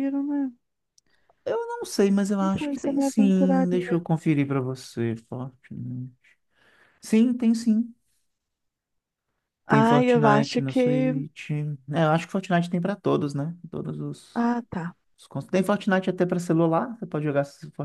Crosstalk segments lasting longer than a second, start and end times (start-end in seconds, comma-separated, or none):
2.4-4.0, 9.7-11.1